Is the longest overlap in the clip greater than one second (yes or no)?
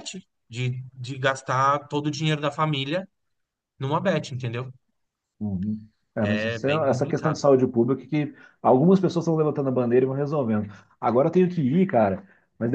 yes